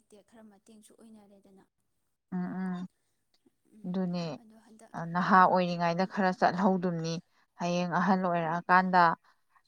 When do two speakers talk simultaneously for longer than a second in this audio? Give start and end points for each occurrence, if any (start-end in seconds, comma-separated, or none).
none